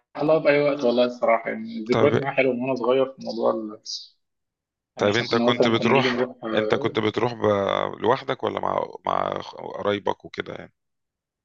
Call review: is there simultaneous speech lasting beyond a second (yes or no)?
yes